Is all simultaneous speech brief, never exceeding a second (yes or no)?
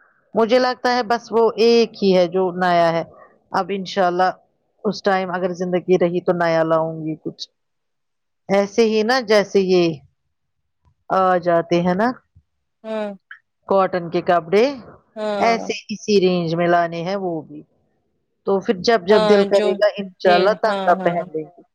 no